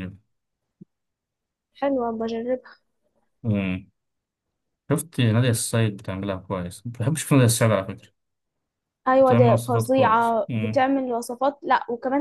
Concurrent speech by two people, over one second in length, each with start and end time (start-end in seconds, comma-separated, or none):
9.2-10.8